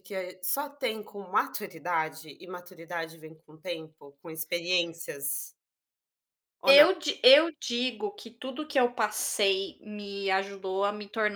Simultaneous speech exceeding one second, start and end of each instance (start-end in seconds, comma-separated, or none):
none